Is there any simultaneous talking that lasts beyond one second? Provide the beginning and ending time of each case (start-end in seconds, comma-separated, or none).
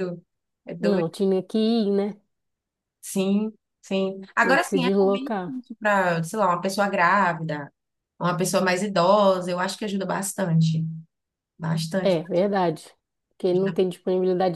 4.4-5.6